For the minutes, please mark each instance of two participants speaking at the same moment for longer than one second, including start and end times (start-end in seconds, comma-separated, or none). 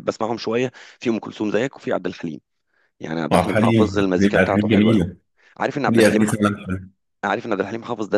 3.3-5.1